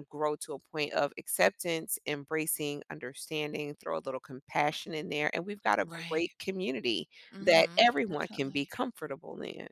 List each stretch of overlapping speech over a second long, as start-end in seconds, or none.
7.3-8.7